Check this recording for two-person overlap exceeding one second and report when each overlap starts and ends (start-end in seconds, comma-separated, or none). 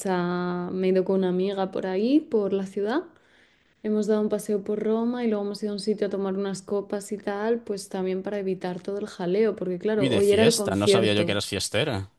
9.9-11.3